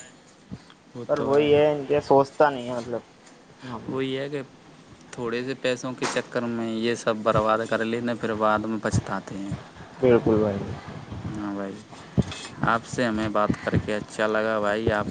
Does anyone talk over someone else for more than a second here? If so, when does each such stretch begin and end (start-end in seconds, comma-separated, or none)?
none